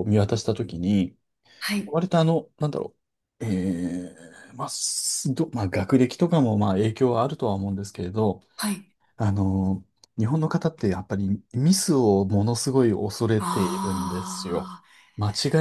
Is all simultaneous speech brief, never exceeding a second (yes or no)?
no